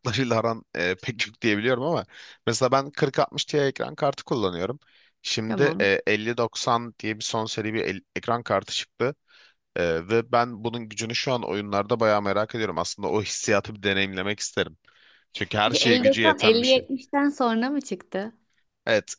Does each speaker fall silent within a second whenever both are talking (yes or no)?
no